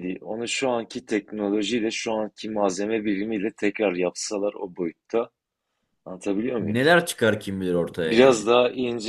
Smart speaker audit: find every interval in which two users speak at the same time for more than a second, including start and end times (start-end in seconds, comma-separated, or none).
none